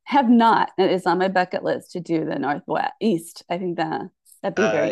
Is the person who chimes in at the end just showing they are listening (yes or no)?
no